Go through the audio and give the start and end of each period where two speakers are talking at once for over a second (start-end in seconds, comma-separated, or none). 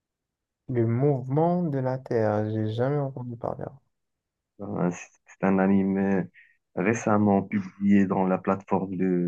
none